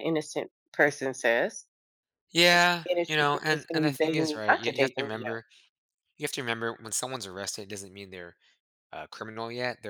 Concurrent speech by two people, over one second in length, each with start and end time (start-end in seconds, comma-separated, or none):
2.9-5.2